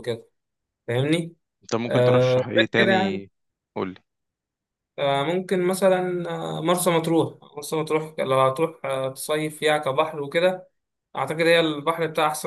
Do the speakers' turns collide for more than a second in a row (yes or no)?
yes